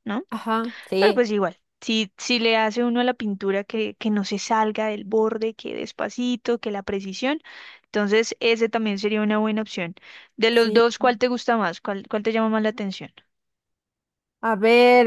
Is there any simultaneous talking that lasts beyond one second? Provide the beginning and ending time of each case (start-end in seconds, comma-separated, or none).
none